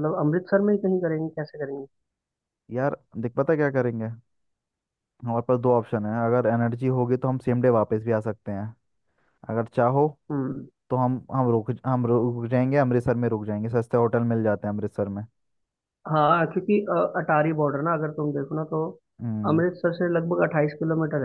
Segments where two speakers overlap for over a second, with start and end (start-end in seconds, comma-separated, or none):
none